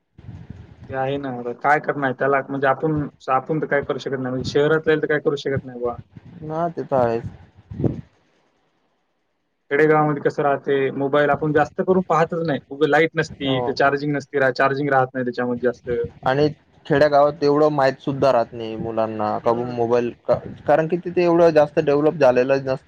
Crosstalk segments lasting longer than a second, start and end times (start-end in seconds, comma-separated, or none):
none